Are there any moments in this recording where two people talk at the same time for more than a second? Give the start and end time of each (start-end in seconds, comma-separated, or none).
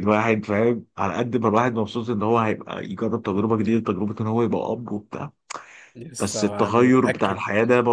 6.2-7.4